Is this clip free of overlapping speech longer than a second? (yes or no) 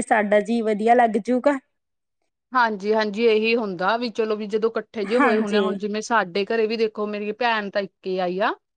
yes